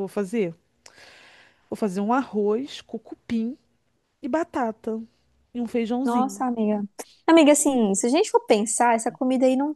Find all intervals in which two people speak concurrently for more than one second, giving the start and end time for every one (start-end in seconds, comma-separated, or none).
none